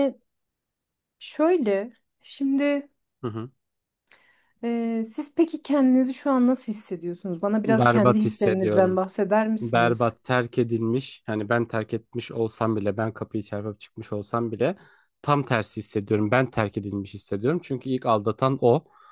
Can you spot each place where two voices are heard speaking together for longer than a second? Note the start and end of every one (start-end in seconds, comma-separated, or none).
7.7-9.0